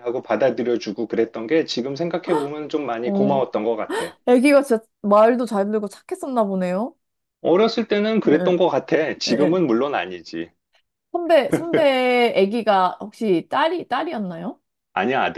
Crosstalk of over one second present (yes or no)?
no